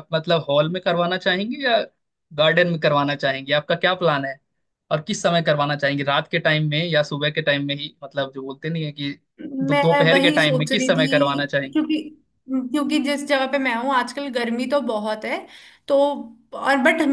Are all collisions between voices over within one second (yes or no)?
no